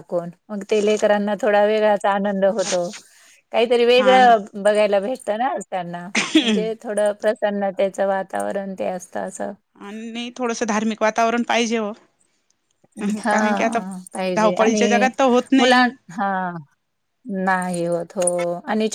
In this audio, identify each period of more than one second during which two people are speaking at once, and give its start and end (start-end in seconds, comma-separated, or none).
none